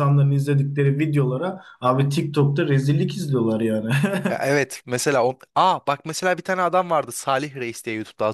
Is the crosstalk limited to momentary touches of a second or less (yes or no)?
yes